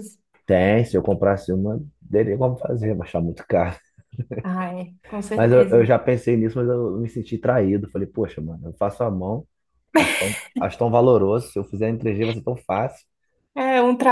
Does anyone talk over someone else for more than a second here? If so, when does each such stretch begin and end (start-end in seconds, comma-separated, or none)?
none